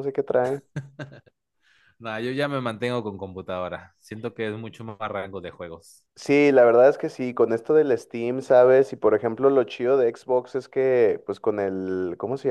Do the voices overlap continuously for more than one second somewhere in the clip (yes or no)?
no